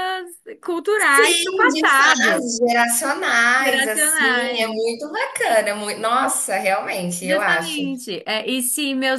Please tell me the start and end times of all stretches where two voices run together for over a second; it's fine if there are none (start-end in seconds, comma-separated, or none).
1.0-2.5, 3.6-4.8